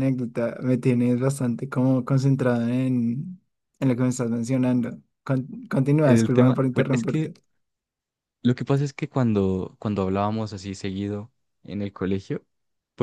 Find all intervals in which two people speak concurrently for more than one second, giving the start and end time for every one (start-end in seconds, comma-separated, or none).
6.0-7.3